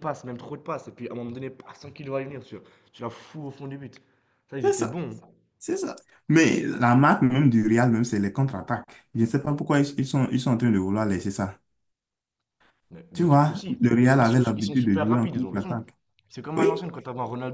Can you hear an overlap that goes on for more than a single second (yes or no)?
yes